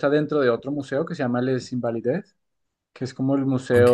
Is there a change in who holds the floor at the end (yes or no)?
no